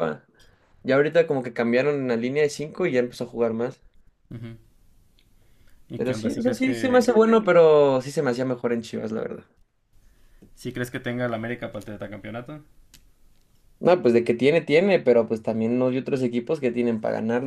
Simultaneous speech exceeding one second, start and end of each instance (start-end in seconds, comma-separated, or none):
6.0-7.2